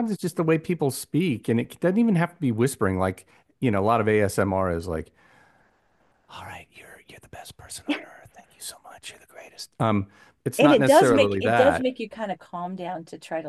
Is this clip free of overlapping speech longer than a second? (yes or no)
no